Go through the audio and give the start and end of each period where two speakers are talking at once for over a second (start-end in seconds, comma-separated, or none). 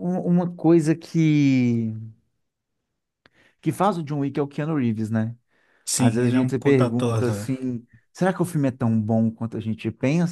6.0-7.5